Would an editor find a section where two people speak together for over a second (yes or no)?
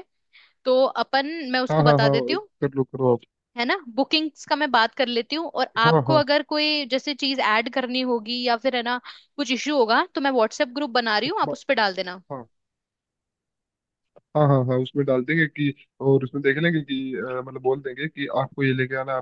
no